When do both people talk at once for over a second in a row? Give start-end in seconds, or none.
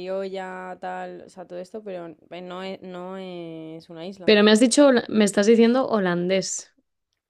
none